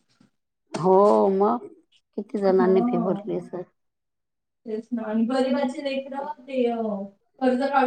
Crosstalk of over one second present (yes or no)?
no